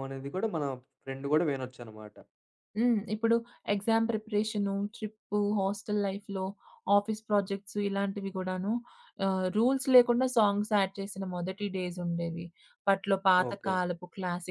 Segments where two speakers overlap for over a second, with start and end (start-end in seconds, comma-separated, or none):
none